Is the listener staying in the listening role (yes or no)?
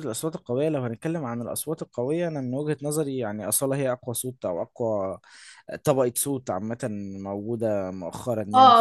no